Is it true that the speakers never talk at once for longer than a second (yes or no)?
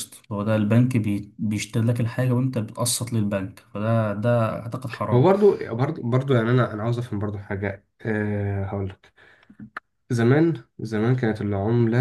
yes